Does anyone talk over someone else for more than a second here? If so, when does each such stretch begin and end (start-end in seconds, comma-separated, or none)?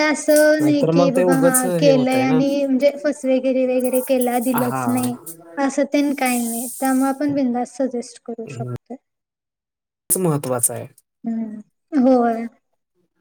0.6-2.4